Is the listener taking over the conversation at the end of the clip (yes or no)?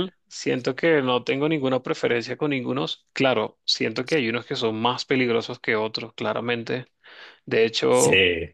no